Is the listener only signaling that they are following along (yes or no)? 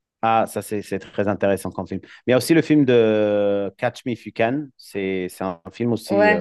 no